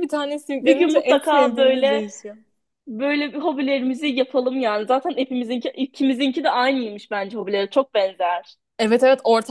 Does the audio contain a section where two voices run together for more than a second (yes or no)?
yes